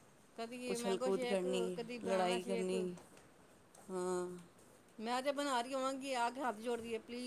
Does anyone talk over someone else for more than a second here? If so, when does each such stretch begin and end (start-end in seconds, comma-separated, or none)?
0.7-2.7